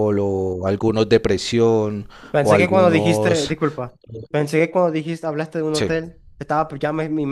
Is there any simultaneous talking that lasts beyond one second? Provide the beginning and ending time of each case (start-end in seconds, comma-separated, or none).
2.3-3.5